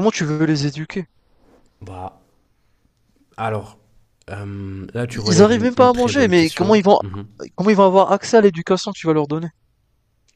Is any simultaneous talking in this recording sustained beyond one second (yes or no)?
yes